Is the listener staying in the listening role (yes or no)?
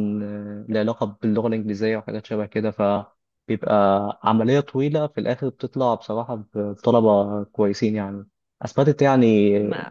yes